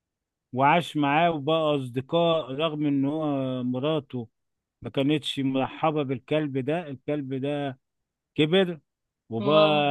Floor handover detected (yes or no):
no